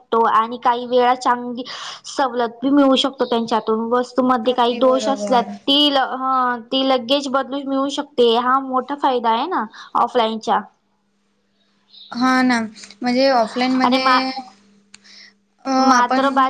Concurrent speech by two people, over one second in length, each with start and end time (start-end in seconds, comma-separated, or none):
4.2-5.4